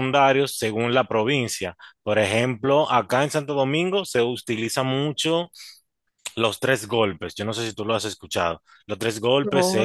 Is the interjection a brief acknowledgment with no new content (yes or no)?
yes